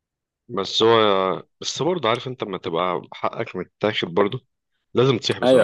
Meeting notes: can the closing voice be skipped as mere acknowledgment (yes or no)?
no